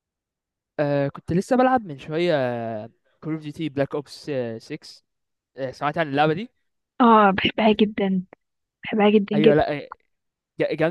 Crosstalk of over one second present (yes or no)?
no